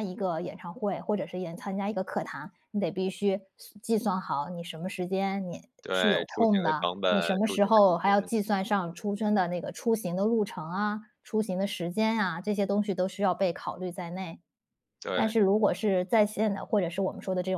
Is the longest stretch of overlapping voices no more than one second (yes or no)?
no